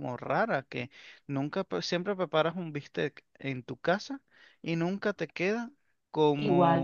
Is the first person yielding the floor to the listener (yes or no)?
no